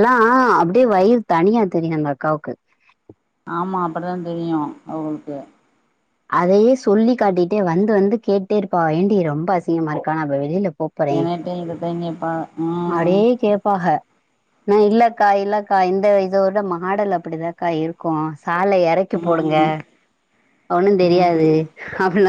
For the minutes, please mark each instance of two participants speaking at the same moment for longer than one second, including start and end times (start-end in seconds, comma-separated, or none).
none